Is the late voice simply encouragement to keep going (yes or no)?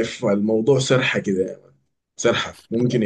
yes